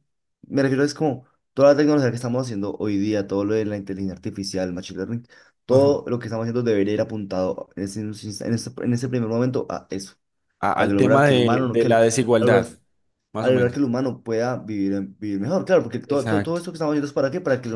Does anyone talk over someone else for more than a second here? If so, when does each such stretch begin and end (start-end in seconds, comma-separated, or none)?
10.8-12.7